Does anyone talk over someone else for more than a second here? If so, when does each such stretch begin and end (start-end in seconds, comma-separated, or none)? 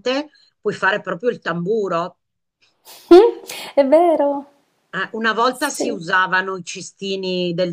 none